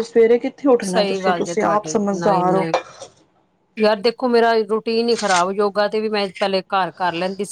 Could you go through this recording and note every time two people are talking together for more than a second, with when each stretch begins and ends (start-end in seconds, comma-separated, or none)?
0.9-2.7